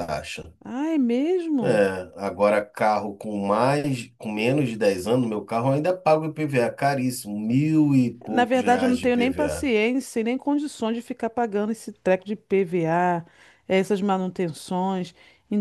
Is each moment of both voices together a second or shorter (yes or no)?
no